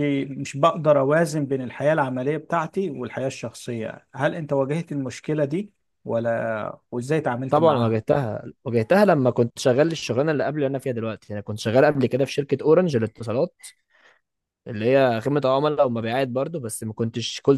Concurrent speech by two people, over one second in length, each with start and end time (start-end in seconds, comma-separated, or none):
none